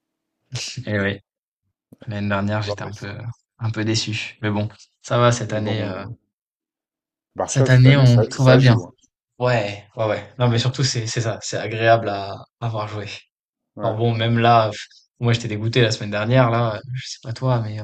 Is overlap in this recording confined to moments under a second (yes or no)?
no